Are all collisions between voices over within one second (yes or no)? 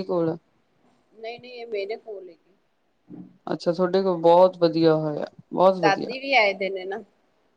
yes